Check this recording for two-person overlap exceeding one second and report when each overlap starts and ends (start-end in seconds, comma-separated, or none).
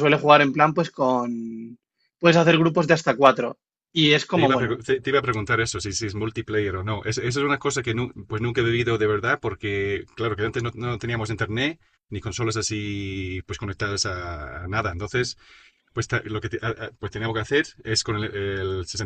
none